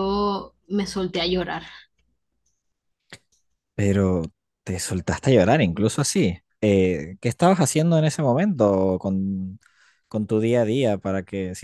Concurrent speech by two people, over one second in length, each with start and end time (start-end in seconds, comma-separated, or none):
none